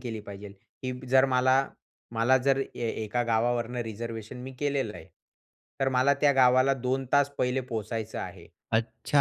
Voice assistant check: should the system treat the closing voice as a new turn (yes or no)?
yes